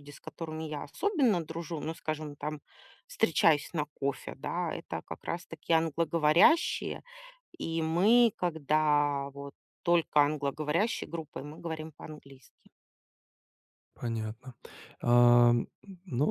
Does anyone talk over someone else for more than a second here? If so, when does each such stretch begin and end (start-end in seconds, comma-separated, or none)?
none